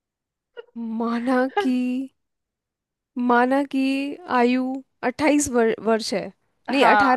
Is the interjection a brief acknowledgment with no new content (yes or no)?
no